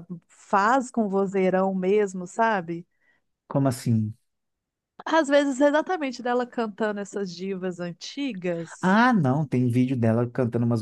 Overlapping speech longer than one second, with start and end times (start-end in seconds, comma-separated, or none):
none